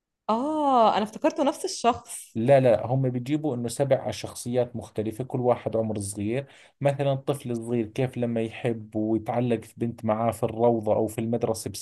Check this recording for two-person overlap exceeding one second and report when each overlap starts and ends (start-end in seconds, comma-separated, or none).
none